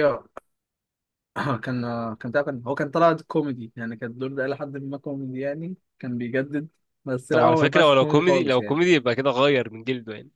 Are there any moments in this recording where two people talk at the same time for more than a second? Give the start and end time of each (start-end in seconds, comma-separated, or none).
7.3-8.8